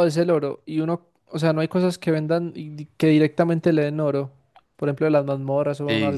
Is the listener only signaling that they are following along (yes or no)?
no